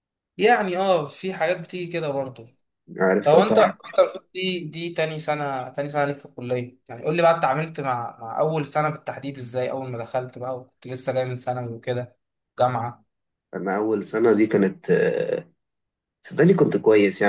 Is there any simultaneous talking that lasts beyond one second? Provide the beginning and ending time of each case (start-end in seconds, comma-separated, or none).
none